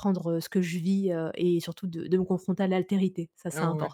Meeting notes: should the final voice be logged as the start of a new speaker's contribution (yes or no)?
yes